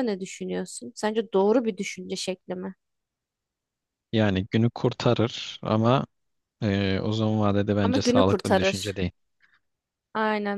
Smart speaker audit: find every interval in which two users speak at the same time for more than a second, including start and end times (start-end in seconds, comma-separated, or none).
7.8-9.0